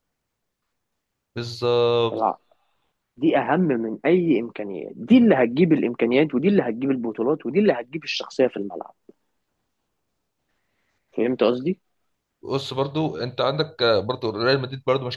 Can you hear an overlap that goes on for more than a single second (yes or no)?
no